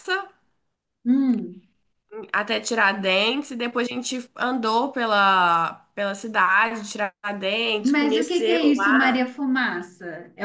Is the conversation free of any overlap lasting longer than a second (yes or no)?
no